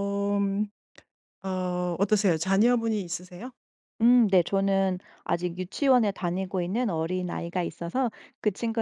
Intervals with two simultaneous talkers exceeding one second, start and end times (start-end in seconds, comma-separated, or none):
none